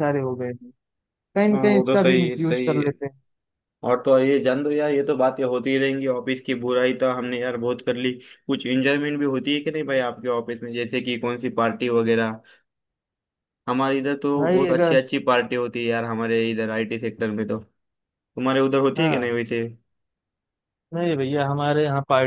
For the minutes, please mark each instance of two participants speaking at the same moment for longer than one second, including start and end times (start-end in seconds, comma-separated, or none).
1.5-2.9